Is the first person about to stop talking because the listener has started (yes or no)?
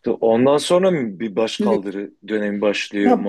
yes